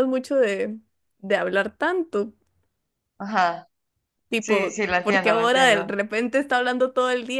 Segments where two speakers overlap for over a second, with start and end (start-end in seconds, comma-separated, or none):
4.4-6.0